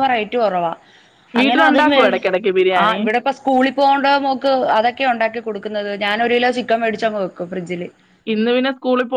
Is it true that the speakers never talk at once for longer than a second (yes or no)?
yes